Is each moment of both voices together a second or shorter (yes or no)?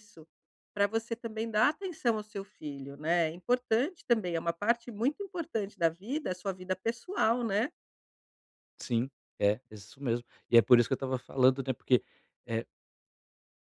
yes